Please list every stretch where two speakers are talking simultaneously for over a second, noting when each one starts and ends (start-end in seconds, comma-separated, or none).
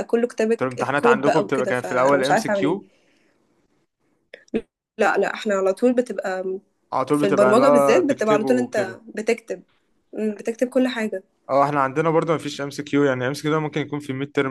0.5-2.8, 7.1-9.0